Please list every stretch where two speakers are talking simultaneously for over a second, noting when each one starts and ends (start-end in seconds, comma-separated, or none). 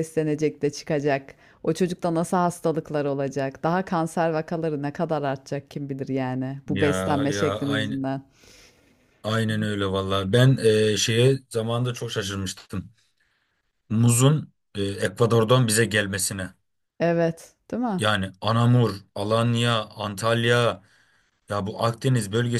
6.7-8.0